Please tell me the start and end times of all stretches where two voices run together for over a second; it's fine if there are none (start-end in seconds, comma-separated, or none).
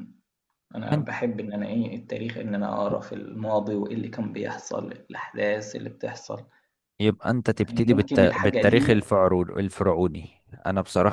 7.6-9.0